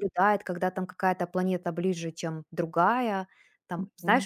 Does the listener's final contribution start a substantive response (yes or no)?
yes